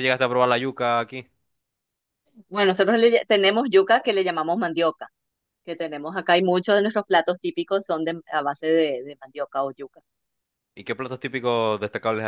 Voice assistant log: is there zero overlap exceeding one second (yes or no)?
yes